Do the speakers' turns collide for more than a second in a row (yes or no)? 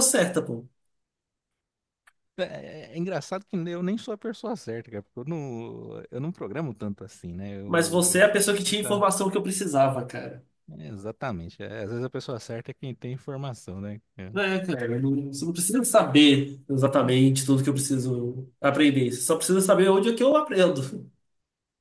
yes